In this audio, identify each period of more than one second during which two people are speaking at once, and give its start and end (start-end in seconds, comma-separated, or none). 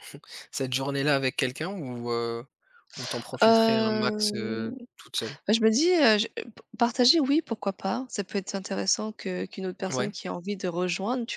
3.4-4.7